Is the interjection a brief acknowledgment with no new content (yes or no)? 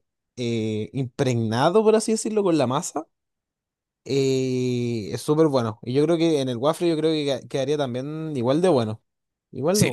no